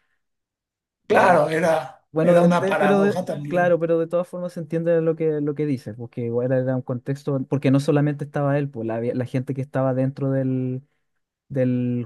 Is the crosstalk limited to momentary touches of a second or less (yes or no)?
no